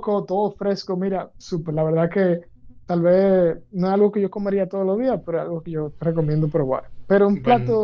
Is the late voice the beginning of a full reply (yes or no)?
no